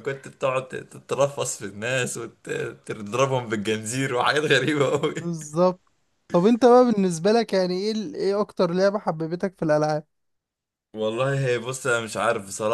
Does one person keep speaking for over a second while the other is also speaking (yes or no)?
no